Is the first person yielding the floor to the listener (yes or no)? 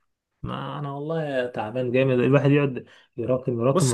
yes